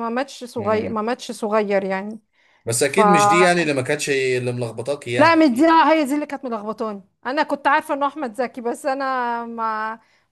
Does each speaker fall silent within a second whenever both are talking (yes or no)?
yes